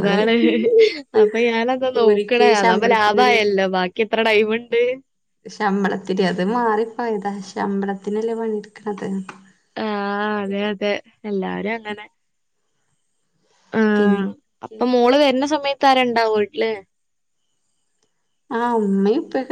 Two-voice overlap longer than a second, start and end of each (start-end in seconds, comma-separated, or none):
1.9-3.4